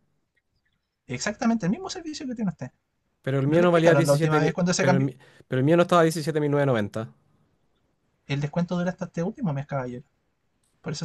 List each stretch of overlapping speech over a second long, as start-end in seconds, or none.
3.5-5.1